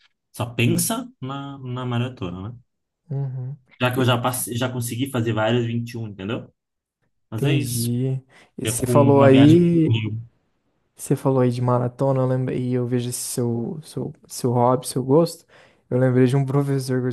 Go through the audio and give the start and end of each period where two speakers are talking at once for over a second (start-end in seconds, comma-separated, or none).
8.6-9.9